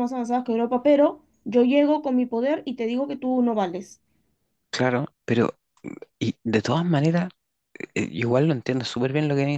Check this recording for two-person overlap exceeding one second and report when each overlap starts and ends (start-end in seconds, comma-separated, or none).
none